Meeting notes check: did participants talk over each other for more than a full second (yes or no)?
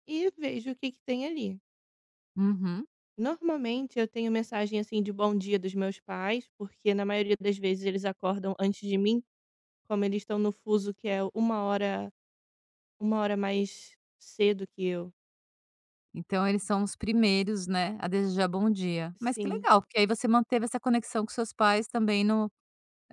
no